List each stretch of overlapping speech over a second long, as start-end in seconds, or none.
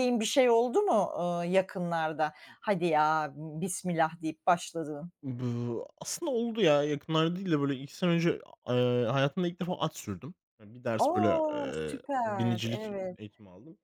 11.0-13.2